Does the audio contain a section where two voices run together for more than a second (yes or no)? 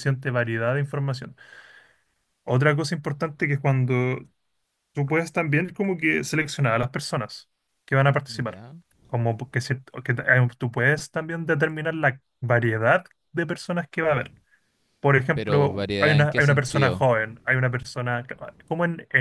yes